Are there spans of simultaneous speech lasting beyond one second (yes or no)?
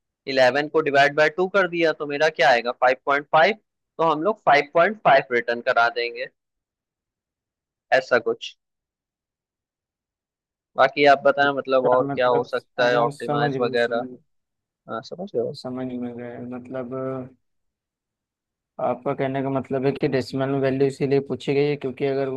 yes